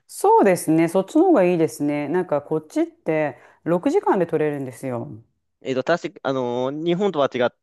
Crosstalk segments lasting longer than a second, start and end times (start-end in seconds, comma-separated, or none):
none